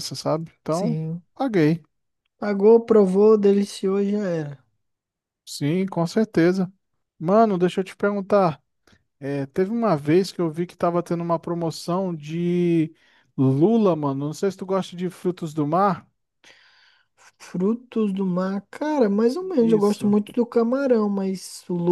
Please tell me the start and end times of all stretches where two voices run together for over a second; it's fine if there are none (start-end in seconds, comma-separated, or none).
none